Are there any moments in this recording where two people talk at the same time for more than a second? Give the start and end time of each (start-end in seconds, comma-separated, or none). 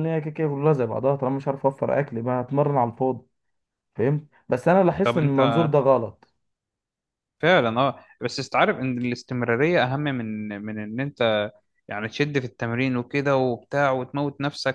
none